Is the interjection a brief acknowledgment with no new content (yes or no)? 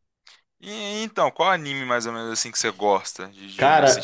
no